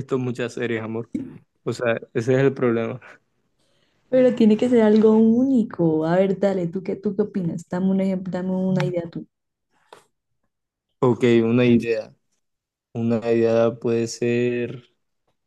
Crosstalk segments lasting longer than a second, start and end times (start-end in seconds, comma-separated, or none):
none